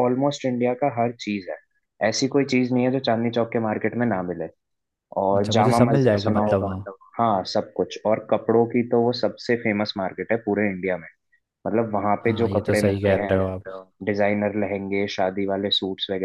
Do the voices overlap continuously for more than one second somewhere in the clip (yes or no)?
yes